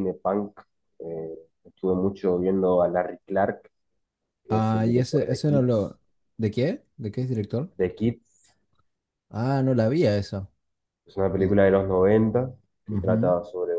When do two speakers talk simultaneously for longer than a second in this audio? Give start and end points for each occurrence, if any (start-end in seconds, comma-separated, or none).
4.5-5.9